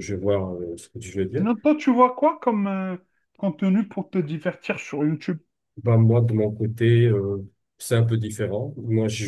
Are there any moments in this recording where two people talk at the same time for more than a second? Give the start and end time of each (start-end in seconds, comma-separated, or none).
none